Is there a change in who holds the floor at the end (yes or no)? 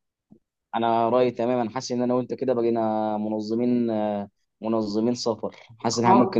no